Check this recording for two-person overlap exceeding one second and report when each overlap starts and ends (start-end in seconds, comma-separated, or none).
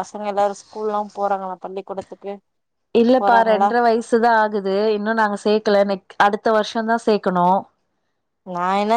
none